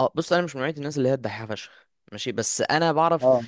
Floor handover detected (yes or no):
no